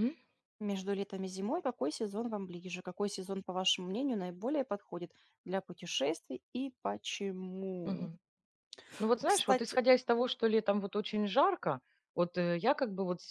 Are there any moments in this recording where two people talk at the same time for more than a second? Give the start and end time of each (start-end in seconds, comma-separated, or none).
none